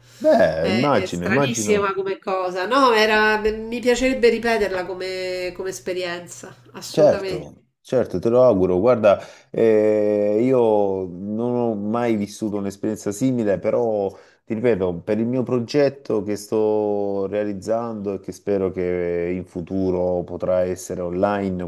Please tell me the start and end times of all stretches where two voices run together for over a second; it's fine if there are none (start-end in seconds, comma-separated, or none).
0.6-2.0